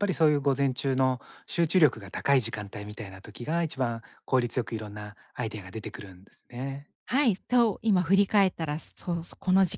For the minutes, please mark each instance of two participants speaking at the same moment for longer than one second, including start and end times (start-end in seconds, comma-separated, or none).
none